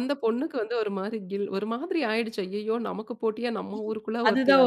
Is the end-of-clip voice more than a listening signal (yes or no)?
yes